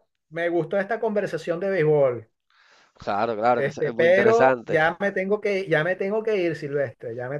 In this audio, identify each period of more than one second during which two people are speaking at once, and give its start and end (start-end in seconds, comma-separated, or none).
3.5-4.8